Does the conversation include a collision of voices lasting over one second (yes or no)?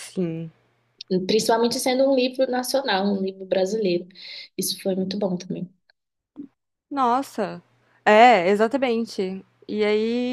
no